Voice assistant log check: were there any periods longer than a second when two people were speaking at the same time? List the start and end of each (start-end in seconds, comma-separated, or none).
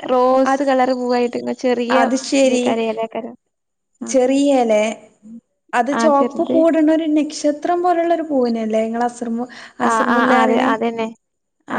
none